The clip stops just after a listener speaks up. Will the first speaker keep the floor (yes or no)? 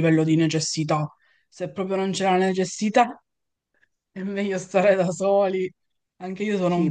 no